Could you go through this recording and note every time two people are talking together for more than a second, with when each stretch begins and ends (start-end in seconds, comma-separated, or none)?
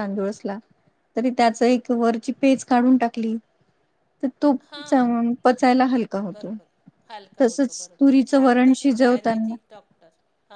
7.4-9.5